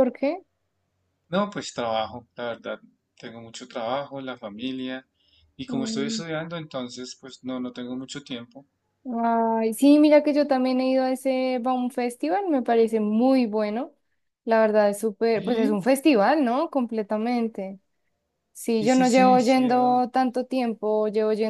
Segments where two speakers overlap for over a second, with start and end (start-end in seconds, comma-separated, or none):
18.8-20.0